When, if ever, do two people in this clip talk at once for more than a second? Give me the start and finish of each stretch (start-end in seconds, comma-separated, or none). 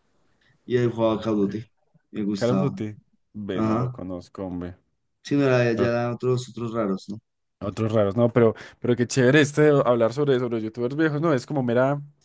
none